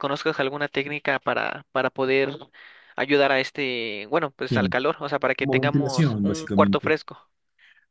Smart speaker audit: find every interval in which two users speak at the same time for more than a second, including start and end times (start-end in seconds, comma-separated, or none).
5.4-6.9